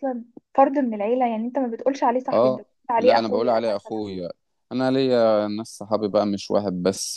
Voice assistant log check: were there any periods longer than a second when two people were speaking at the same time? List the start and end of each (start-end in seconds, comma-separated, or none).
2.3-4.0